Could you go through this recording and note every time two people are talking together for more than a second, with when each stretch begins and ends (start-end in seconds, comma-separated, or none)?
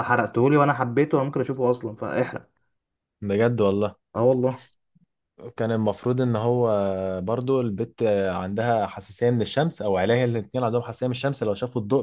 none